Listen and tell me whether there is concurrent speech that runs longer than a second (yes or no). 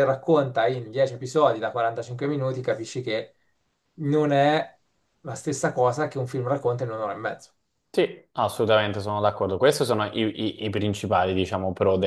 no